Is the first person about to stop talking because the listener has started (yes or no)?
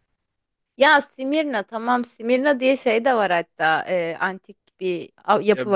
yes